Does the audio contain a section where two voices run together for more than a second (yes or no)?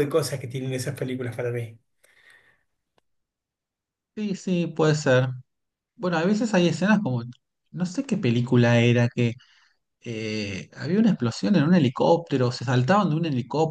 no